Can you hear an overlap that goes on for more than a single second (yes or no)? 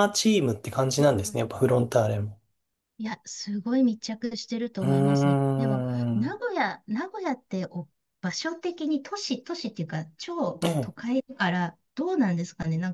yes